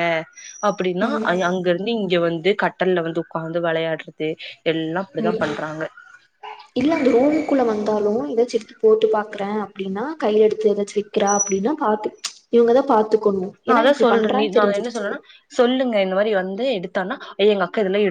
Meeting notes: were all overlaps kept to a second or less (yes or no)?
yes